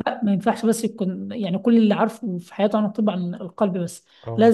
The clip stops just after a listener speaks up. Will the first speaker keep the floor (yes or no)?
yes